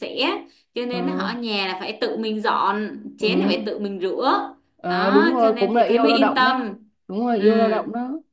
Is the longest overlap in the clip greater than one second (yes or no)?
yes